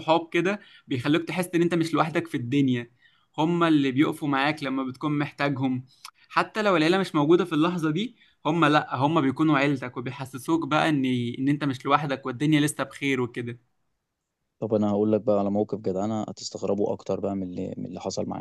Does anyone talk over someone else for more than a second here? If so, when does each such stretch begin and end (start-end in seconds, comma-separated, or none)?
none